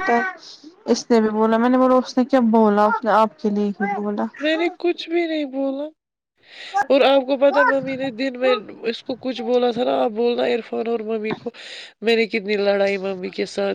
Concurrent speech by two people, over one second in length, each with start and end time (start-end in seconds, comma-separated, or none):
none